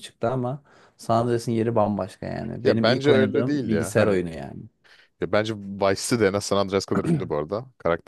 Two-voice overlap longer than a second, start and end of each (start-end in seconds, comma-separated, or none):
2.6-4.2